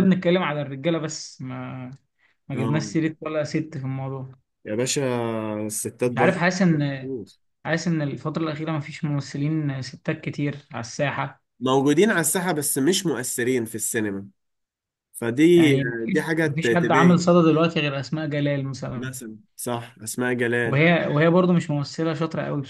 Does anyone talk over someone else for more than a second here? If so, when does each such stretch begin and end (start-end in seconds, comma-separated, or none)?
15.6-17.2